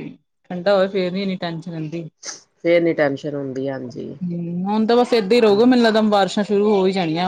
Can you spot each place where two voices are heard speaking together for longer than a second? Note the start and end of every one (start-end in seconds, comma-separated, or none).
none